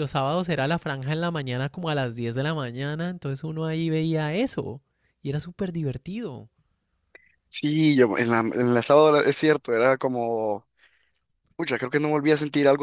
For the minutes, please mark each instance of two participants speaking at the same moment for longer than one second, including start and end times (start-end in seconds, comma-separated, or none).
none